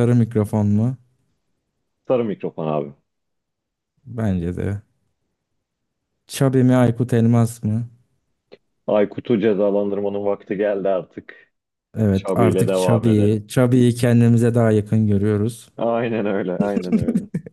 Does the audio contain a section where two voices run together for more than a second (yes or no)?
yes